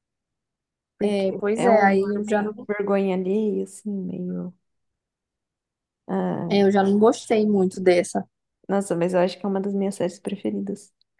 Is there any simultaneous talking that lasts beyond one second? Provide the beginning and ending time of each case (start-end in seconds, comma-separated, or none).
1.0-2.5